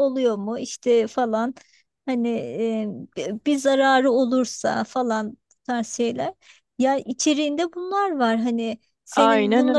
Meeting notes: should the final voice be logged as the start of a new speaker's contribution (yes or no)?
no